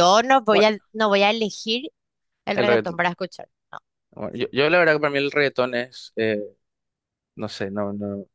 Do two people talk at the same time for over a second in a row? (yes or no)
no